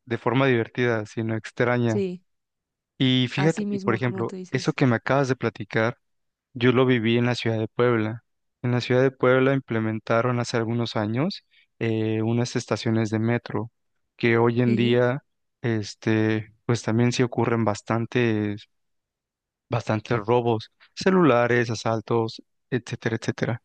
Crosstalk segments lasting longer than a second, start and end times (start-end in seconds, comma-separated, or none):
3.4-4.8